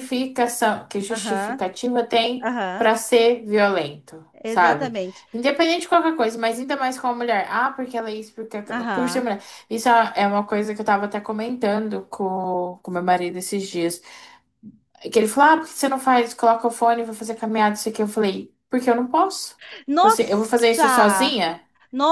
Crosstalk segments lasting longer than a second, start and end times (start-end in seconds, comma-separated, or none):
20.0-21.4